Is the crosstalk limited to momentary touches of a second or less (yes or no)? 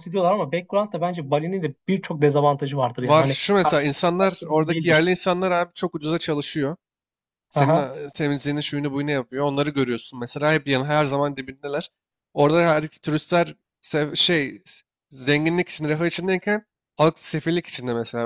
no